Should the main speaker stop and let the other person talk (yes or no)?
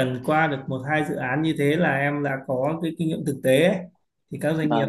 no